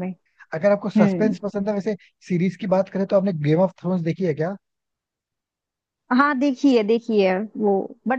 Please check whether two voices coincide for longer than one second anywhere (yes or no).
no